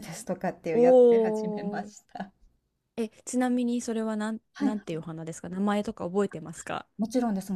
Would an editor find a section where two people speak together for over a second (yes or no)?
yes